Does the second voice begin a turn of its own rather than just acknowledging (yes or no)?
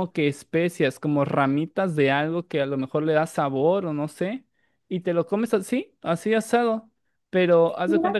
no